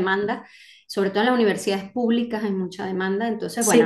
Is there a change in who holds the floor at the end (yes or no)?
no